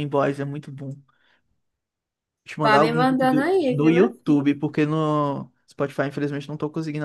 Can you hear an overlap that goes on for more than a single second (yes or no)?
yes